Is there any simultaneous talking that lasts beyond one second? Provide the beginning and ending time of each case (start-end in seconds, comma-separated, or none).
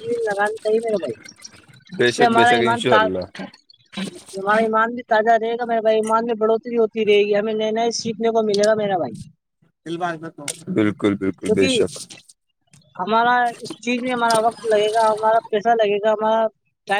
2.0-3.4